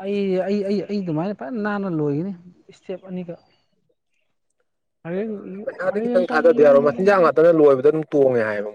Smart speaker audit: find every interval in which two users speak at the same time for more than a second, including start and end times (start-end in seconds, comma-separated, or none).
5.5-7.3